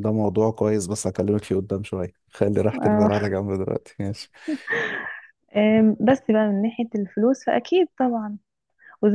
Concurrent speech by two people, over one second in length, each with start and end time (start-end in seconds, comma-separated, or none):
none